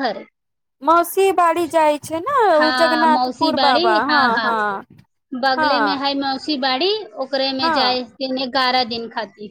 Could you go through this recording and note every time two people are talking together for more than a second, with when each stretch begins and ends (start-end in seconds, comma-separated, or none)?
2.6-4.0